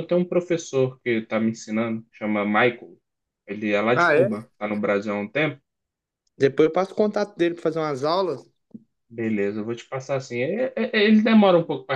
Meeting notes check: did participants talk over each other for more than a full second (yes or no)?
no